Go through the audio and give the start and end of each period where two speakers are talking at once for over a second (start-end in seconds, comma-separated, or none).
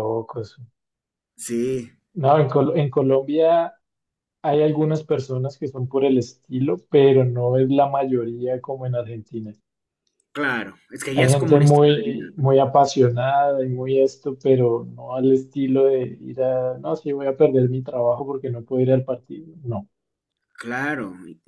11.2-12.5